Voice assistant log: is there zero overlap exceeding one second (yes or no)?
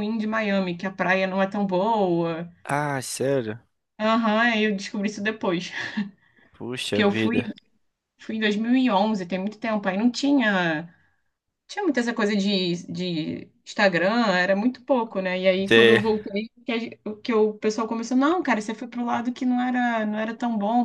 yes